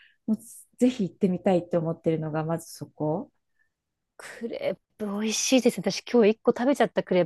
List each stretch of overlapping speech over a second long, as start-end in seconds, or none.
none